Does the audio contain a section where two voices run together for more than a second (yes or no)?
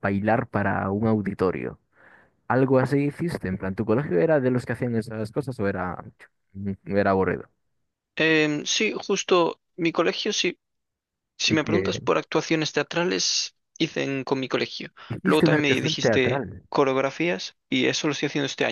yes